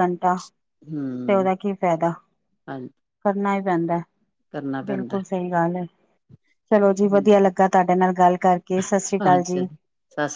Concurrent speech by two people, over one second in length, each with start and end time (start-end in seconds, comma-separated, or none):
none